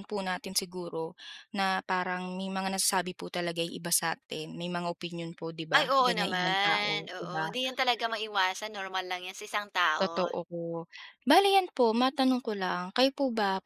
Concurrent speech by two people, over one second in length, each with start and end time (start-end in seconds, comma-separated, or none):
5.8-7.6